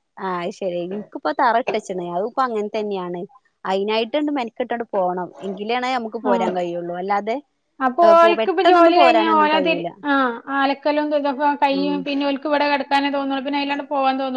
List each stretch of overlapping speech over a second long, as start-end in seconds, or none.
8.1-9.7